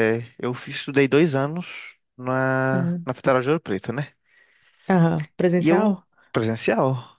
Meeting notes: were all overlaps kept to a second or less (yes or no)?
yes